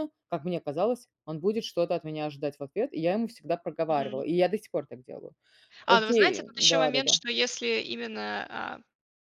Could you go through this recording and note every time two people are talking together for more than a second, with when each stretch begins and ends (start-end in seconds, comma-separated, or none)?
5.9-7.2